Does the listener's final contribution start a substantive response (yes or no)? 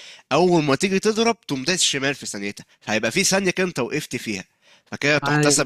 no